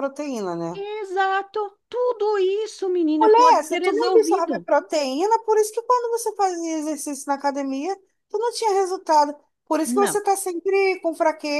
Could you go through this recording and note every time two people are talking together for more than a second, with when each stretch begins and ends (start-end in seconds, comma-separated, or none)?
3.2-4.7